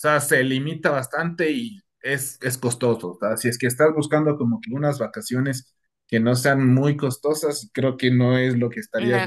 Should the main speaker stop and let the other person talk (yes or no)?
yes